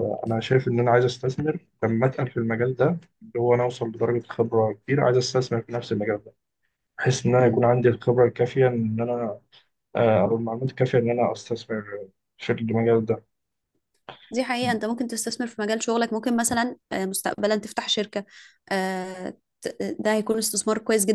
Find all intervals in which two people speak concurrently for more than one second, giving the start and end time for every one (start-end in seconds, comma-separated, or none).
none